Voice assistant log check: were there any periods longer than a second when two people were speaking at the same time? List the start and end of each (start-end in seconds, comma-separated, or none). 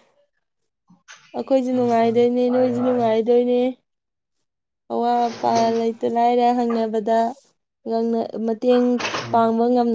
1.7-3.0